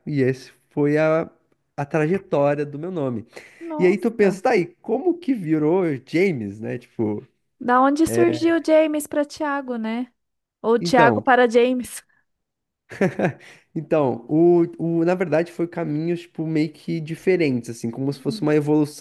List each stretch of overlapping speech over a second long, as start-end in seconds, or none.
none